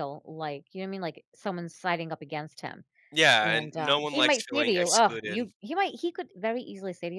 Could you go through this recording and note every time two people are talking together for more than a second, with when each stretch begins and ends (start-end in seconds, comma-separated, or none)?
3.4-5.4